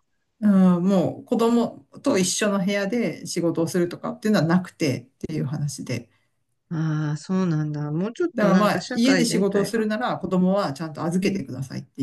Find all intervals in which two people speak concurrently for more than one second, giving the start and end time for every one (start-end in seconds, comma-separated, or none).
8.3-9.8